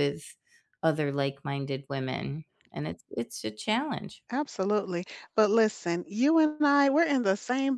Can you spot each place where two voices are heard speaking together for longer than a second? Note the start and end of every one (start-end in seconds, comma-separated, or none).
none